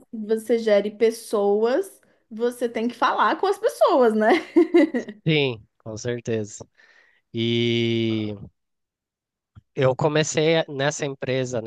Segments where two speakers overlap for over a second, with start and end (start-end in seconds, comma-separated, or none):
none